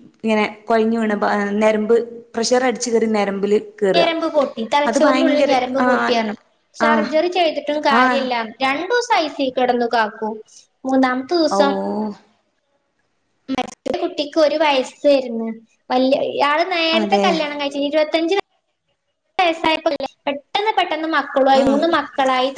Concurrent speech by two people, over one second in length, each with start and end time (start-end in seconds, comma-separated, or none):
none